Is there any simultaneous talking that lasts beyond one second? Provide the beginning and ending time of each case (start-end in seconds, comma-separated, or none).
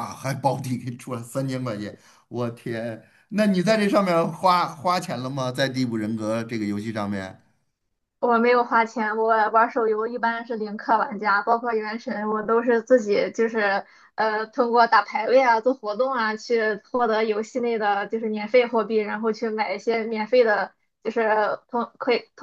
none